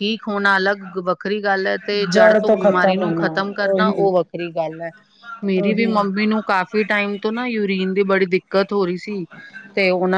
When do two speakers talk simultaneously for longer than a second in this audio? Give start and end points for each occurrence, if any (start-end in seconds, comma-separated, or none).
2.5-4.1